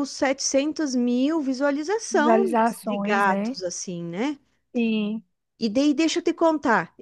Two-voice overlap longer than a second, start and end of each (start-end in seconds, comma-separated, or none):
2.1-3.6